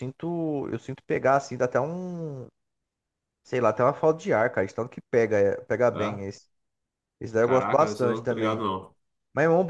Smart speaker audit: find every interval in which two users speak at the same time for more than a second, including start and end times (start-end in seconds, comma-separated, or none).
7.4-8.6